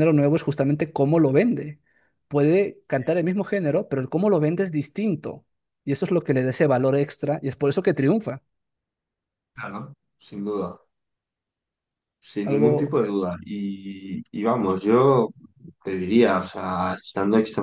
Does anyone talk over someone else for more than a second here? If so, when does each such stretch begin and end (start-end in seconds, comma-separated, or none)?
none